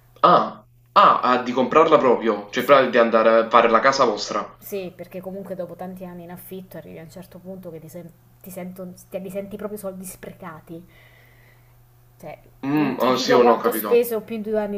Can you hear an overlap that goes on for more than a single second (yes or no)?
yes